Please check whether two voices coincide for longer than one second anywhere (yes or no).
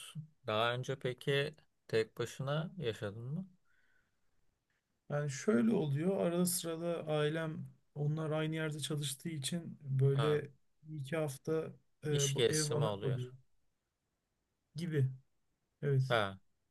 yes